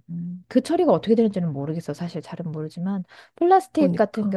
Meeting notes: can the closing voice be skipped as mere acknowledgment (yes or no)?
yes